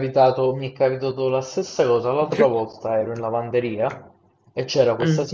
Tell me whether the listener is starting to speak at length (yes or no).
no